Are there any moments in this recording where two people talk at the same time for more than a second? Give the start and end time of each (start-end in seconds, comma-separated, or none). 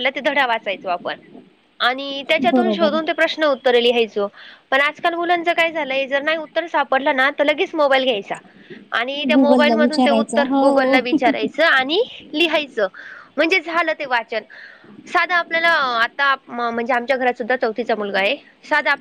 9.3-10.7